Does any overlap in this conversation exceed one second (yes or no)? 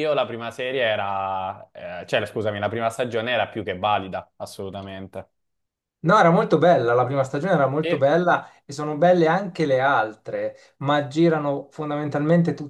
no